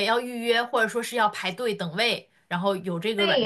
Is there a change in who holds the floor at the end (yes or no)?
yes